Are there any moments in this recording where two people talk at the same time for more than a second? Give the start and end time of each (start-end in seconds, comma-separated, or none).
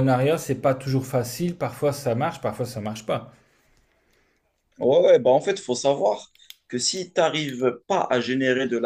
none